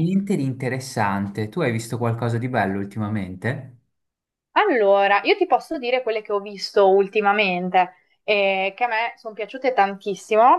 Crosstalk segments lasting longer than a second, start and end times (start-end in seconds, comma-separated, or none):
none